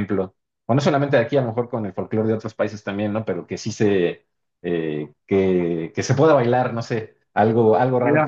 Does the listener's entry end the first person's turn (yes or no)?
no